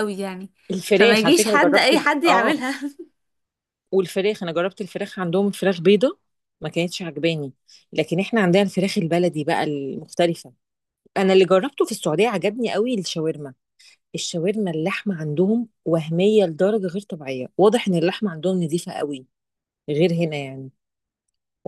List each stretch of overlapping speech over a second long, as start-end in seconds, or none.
0.9-2.6